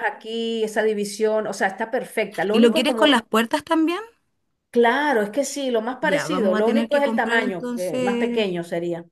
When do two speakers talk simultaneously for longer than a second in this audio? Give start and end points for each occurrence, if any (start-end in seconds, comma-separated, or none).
6.0-8.5